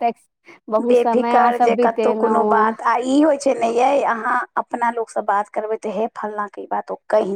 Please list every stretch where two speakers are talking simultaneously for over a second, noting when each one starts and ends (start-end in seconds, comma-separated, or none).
0.9-2.6